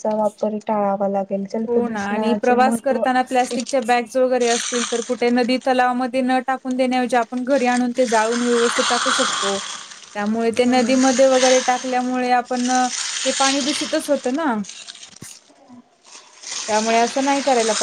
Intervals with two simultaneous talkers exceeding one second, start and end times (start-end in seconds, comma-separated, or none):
1.7-3.0